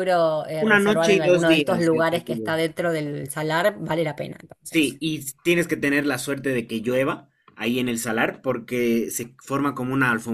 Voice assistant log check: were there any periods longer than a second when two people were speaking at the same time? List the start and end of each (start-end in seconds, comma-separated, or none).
0.6-2.6